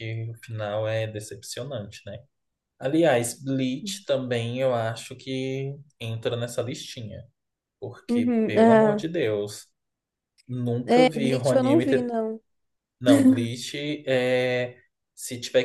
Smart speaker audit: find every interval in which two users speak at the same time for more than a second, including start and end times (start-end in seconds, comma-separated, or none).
10.8-12.2